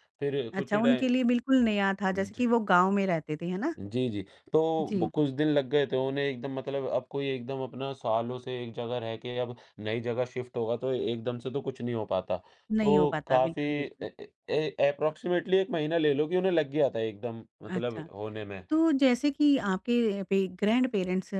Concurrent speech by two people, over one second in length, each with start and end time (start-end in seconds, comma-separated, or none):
12.8-14.1